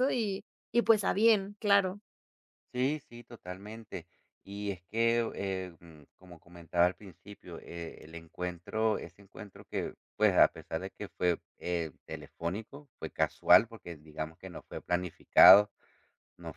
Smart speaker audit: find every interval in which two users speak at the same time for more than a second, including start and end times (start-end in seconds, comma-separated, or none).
none